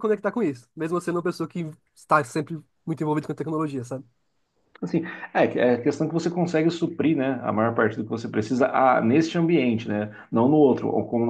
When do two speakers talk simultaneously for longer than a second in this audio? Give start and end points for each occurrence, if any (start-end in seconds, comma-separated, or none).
none